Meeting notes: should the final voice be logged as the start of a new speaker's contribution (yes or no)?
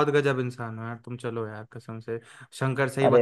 no